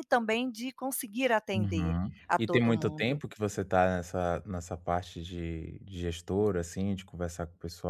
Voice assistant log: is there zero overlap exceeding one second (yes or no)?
no